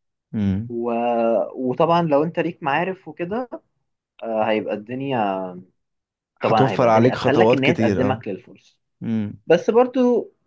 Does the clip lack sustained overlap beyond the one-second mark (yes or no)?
no